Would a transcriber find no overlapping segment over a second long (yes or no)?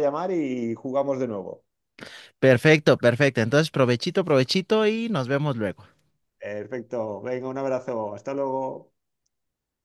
yes